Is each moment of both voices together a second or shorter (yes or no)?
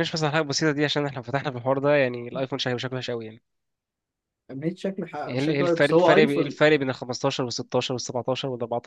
no